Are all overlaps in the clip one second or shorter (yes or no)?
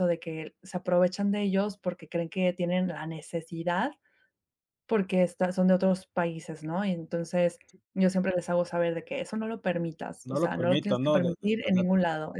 no